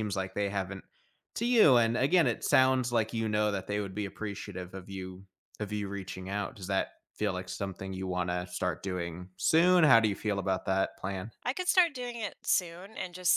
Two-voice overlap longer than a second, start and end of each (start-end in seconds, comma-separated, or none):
none